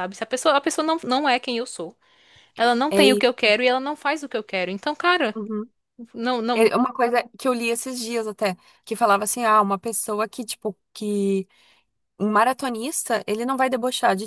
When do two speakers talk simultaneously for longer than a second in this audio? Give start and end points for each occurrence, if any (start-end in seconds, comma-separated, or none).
none